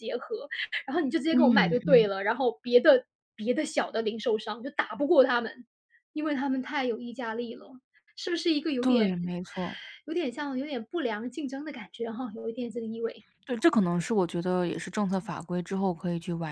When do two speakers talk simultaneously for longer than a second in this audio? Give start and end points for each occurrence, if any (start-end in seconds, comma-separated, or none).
none